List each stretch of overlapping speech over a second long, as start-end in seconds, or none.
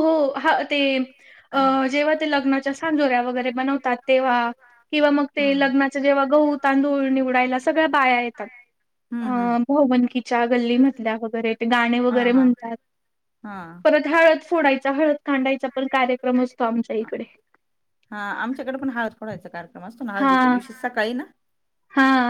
none